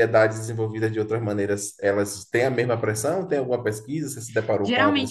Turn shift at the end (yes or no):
yes